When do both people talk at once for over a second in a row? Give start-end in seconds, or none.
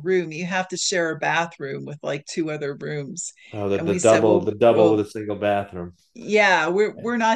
3.8-5.0